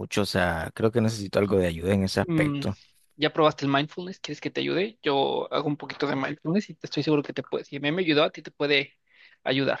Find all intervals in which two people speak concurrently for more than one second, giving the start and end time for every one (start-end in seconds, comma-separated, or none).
none